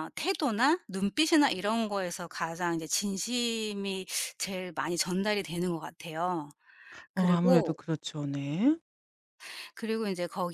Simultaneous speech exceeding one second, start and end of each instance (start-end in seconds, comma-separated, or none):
none